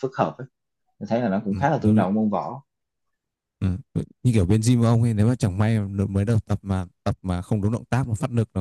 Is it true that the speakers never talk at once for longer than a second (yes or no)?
yes